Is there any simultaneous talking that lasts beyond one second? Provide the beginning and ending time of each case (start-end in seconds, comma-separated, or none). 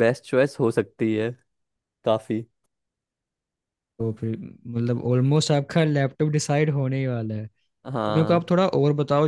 none